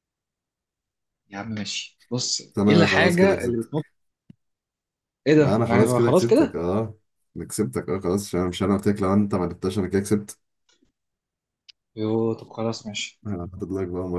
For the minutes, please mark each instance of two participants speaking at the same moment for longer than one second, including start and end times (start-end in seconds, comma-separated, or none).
2.5-3.9, 5.4-6.6